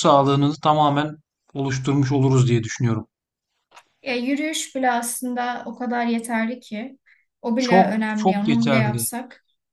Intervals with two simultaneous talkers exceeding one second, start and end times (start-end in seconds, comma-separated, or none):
7.6-9.1